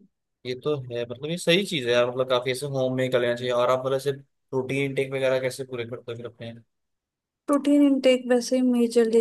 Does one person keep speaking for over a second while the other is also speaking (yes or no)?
no